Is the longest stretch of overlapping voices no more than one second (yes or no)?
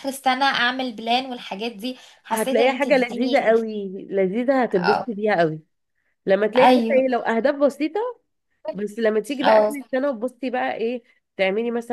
no